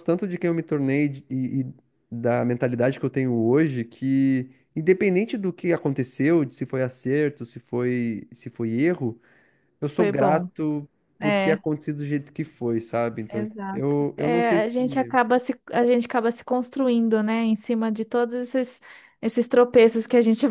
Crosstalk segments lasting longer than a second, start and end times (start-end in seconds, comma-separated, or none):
13.3-15.2